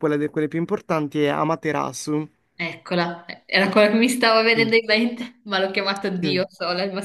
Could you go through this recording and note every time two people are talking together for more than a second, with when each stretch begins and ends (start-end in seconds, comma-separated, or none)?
none